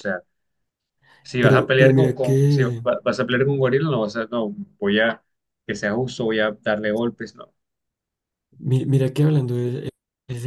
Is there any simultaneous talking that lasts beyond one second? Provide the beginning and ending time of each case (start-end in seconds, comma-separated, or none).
1.4-2.8